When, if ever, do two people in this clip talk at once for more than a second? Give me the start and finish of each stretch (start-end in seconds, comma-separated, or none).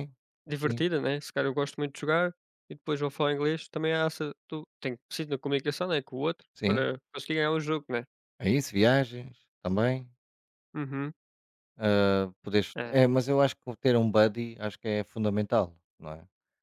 none